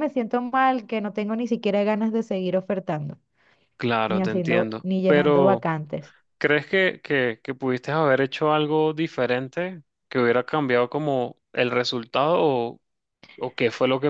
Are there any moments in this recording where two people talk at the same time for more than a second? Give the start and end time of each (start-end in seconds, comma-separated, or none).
4.1-5.7